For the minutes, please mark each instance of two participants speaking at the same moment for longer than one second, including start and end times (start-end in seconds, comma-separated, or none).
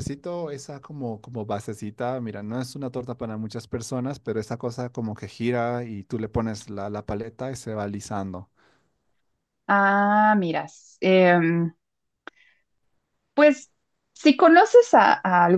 none